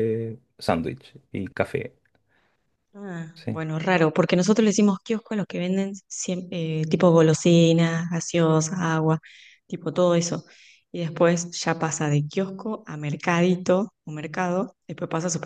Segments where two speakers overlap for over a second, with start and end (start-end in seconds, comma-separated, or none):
none